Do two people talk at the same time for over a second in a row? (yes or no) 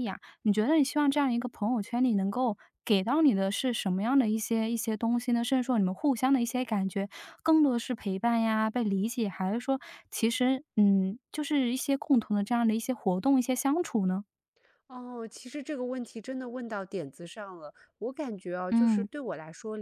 no